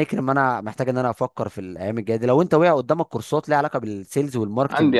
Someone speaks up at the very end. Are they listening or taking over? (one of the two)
taking over